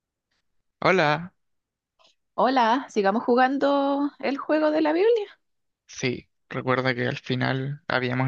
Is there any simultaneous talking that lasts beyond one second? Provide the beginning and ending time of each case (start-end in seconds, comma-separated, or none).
none